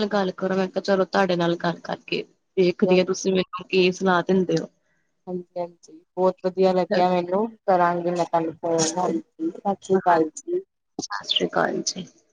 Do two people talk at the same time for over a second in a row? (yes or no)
no